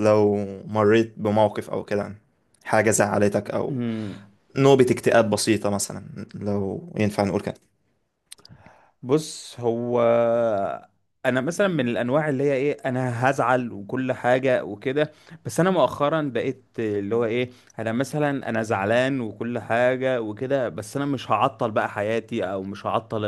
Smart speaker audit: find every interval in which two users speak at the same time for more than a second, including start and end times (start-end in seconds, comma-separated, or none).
none